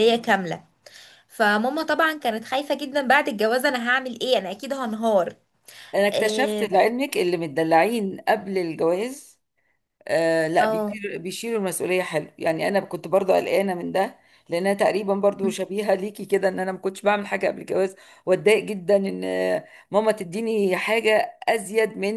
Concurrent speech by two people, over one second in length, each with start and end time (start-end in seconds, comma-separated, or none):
none